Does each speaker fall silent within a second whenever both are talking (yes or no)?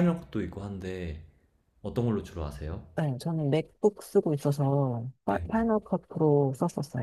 yes